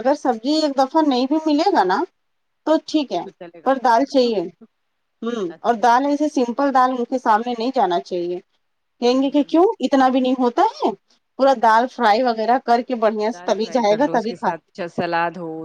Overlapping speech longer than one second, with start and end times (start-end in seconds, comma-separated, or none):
none